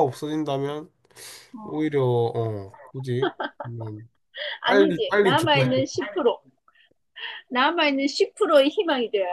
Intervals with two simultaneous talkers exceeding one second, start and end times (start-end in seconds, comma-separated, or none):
4.7-5.9